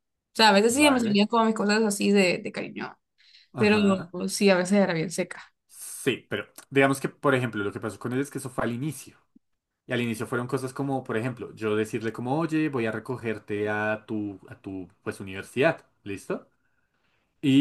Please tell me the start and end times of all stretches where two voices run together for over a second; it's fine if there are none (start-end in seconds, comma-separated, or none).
none